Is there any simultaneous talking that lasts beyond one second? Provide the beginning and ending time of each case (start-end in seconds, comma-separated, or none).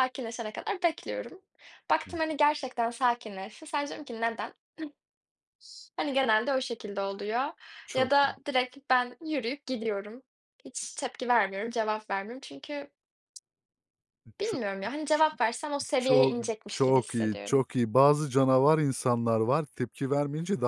16.0-17.6